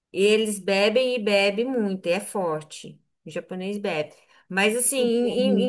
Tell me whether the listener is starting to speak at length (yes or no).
no